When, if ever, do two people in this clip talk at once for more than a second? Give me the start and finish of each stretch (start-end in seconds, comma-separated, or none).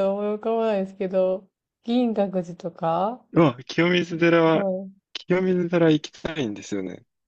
none